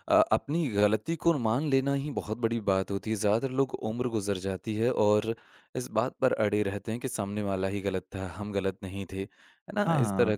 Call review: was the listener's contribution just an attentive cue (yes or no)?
yes